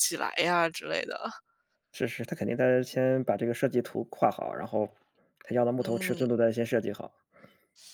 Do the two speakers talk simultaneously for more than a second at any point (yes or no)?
no